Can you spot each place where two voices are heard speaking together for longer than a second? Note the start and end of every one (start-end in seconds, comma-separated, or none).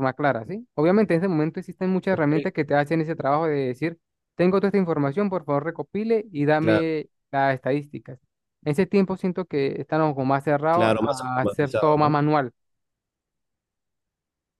10.7-12.2